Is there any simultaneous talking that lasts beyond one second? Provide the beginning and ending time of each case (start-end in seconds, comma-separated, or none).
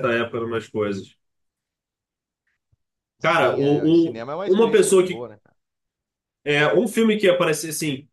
3.2-5.3